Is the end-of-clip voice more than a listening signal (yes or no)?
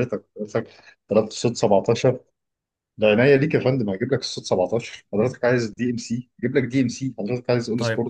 yes